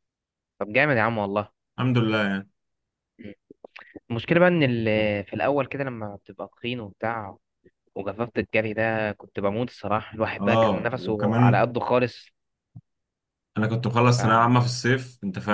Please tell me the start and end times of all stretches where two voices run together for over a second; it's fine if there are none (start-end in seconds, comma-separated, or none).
10.4-11.7